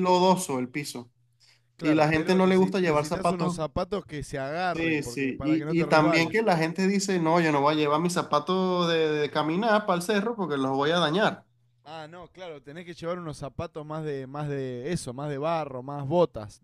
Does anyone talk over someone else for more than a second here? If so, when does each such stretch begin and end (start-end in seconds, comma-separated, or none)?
1.8-3.6, 4.7-6.4